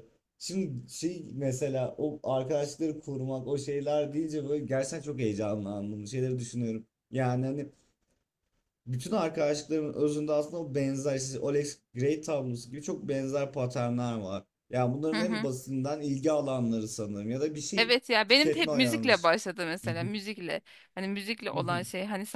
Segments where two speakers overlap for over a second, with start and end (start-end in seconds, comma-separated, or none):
17.8-19.3